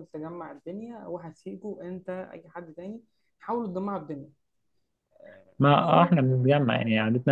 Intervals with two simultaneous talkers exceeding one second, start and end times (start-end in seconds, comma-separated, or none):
none